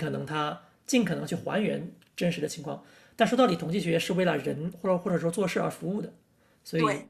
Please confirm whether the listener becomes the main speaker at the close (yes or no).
no